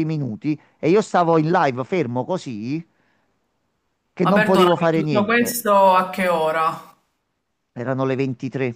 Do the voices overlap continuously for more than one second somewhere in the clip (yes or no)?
yes